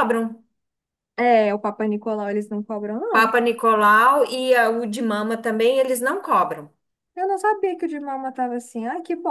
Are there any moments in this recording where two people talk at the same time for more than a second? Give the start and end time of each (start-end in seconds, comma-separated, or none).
none